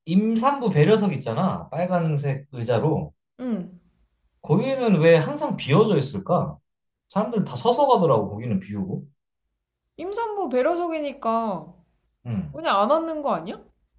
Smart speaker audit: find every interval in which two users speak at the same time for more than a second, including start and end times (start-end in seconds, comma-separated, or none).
none